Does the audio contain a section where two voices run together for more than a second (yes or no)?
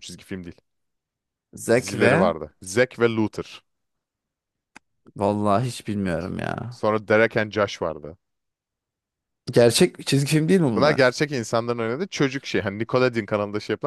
no